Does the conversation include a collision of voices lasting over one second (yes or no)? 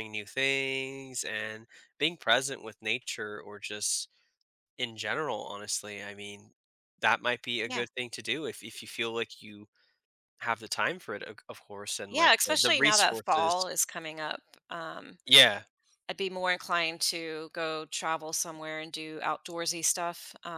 yes